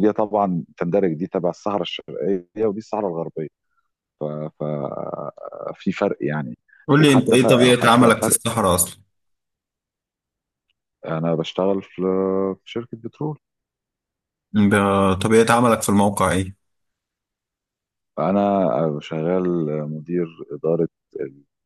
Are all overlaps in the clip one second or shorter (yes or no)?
no